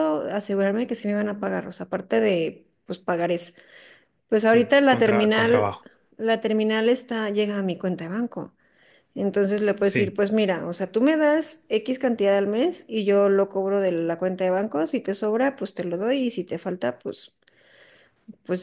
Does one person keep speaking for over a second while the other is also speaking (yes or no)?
yes